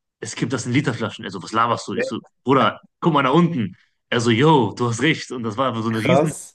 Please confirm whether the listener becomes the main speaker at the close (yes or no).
no